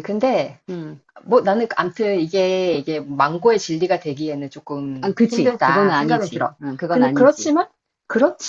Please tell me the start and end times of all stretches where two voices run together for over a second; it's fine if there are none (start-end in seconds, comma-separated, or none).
5.0-7.5